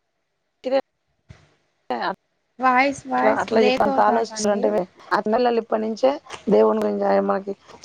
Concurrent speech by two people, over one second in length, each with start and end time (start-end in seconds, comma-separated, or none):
2.6-4.7